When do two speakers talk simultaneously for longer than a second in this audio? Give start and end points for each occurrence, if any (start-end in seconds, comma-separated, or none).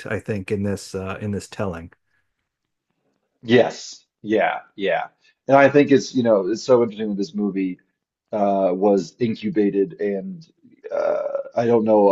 none